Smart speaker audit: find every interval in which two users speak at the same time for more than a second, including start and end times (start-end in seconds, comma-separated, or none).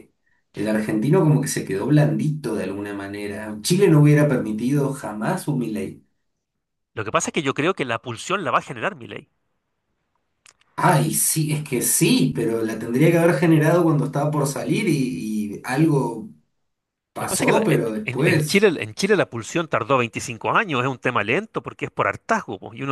17.2-18.6